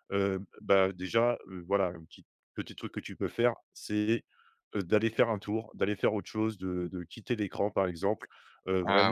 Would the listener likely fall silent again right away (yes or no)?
yes